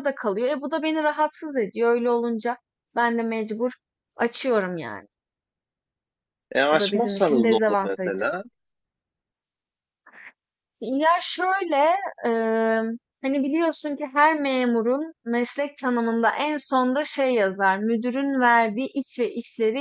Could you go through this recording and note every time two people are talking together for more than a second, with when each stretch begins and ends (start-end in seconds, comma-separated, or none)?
6.7-8.3